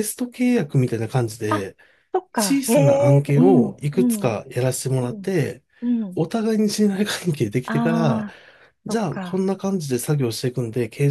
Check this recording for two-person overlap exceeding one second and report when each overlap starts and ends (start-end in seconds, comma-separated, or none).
2.4-4.3